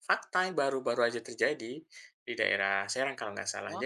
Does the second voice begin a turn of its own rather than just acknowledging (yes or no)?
no